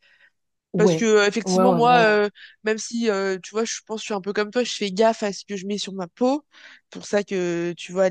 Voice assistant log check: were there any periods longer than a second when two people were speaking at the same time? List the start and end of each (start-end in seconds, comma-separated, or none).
0.8-2.2